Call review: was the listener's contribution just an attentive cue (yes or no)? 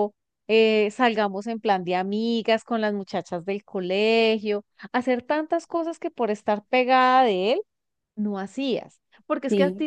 yes